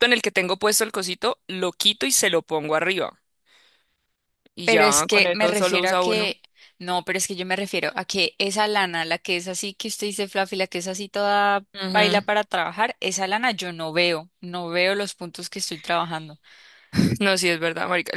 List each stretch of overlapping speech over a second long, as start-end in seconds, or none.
4.6-6.3